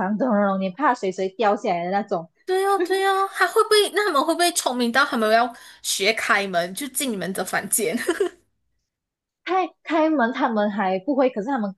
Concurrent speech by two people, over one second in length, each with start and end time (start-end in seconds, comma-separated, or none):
none